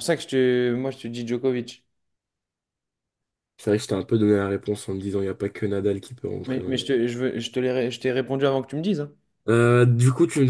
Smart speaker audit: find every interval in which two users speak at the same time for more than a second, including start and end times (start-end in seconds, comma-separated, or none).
none